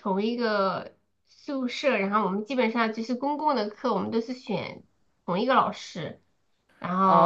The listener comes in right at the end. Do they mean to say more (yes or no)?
yes